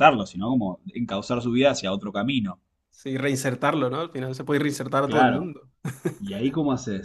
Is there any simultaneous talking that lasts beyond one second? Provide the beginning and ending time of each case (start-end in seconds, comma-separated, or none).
none